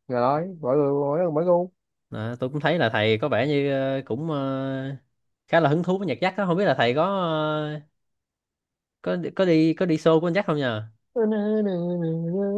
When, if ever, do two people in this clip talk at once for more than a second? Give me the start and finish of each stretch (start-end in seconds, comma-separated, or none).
none